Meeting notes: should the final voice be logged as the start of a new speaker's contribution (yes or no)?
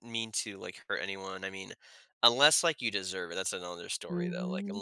yes